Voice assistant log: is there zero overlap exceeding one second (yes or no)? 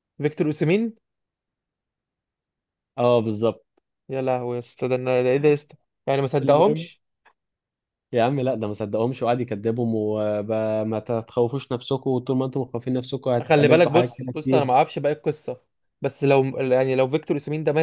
no